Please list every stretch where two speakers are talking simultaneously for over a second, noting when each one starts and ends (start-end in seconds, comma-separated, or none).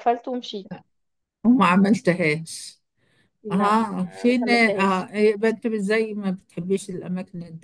3.5-5.1